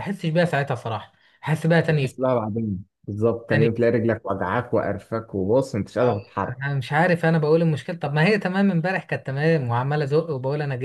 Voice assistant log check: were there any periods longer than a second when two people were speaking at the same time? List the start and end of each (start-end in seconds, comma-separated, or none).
none